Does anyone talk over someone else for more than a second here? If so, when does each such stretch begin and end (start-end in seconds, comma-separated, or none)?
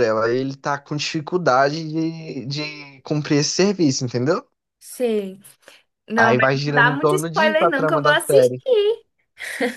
6.2-8.6